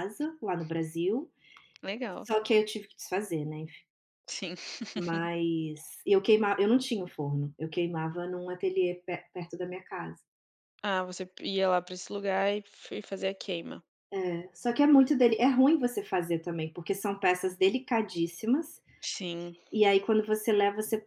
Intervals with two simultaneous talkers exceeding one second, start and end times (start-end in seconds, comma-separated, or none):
none